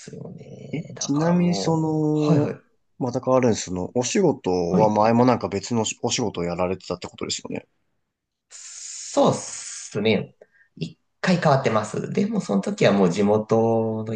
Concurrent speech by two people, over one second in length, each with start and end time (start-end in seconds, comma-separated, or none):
0.7-2.6